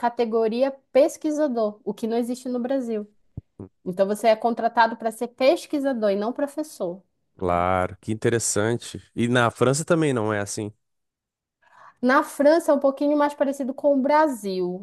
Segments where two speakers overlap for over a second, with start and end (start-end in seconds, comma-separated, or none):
none